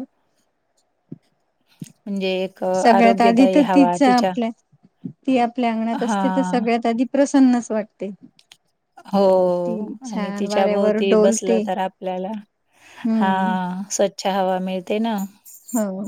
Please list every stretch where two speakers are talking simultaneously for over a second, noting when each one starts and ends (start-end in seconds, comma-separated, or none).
2.8-4.3, 10.1-11.6